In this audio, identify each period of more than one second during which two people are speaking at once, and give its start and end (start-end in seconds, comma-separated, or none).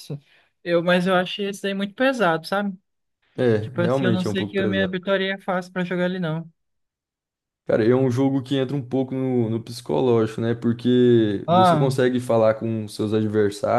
3.6-5.0